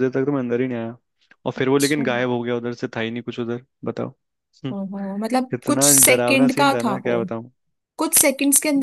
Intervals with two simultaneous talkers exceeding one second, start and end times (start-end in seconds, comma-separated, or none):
5.5-7.1